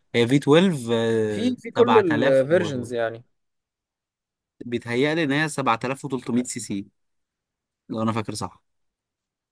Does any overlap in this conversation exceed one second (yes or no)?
yes